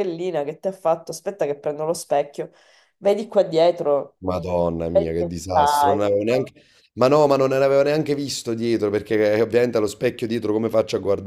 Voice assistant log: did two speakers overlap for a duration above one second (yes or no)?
yes